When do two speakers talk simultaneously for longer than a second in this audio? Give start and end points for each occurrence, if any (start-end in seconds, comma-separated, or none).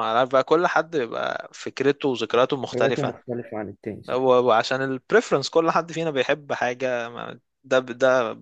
none